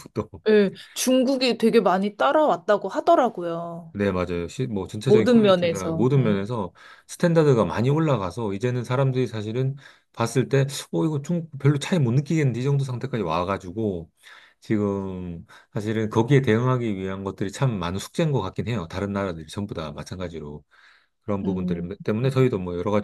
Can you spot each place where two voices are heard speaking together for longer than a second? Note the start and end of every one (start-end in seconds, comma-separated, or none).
5.0-6.4